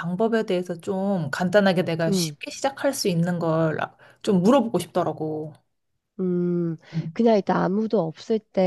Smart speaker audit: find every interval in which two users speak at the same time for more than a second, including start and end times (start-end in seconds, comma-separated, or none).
none